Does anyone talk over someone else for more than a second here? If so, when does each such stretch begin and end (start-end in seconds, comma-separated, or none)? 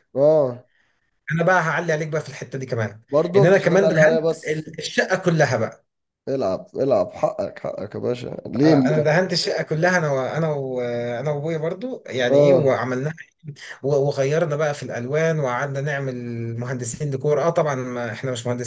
3.1-4.7